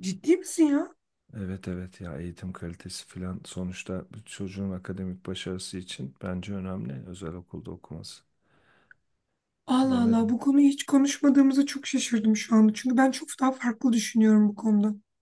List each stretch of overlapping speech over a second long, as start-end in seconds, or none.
none